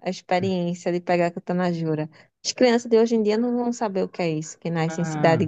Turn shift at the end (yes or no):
yes